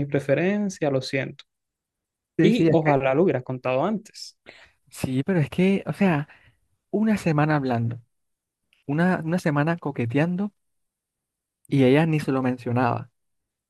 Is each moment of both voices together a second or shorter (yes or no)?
yes